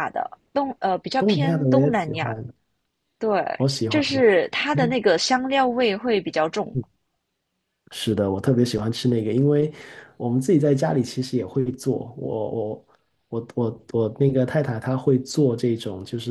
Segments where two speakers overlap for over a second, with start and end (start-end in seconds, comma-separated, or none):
1.1-2.4